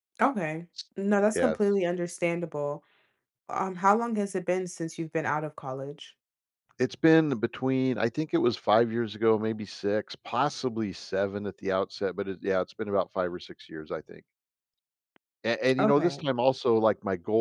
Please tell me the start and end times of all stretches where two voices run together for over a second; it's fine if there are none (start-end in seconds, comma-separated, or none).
none